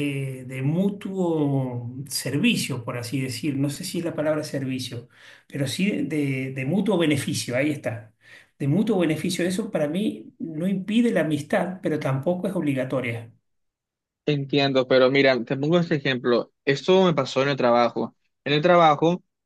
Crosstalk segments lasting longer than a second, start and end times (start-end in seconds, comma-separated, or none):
none